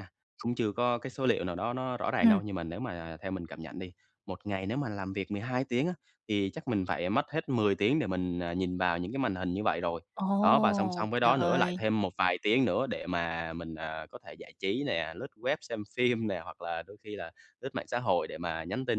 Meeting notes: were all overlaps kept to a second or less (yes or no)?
no